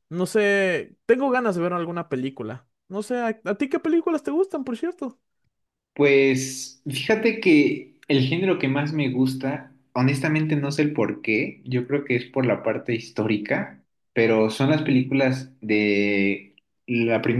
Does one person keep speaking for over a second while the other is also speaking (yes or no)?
no